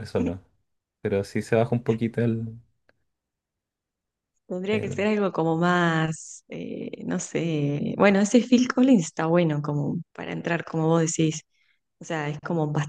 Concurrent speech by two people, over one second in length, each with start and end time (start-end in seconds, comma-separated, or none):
none